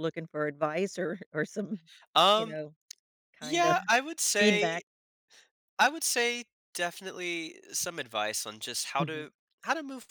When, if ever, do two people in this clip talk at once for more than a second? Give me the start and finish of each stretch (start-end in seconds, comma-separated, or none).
none